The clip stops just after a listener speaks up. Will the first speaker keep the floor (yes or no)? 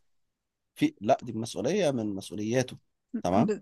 yes